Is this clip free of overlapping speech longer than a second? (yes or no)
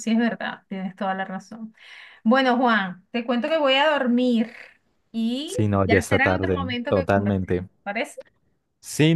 no